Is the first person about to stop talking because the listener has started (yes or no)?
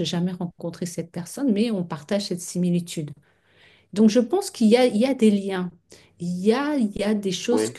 no